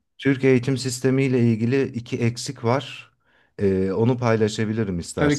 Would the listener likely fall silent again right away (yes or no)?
no